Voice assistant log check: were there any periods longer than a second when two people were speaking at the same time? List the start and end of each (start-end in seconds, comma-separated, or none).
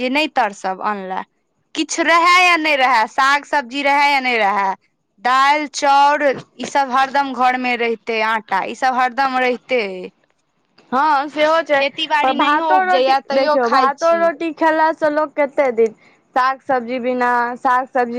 12.2-14.2